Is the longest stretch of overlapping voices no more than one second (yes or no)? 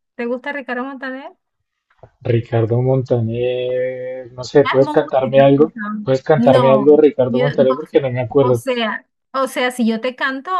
no